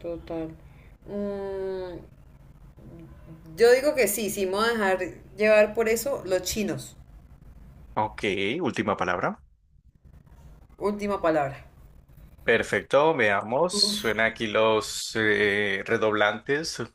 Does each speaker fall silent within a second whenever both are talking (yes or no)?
yes